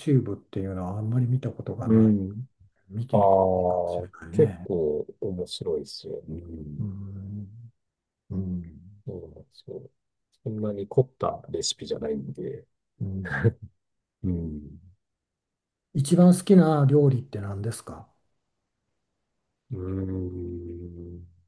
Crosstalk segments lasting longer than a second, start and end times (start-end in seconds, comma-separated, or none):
3.1-4.7